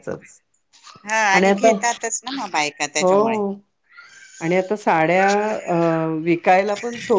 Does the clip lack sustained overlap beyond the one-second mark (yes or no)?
yes